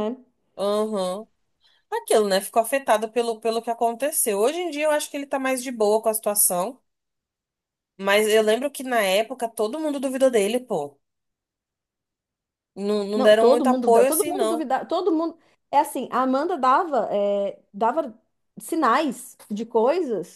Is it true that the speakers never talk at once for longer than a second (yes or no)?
no